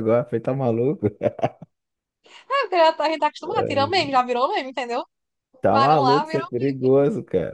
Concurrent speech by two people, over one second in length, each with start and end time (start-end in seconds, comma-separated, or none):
5.7-6.9